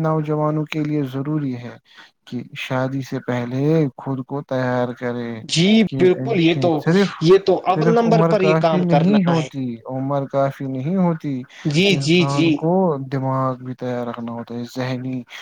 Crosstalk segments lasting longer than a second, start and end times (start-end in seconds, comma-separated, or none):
7.7-9.5